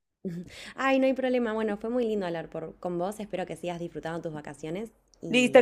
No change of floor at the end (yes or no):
no